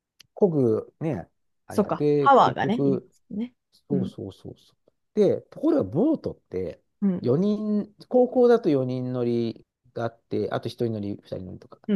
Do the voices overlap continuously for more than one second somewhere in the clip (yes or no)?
yes